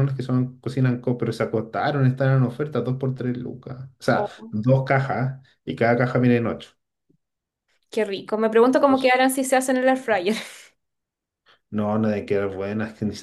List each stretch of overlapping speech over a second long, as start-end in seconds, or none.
none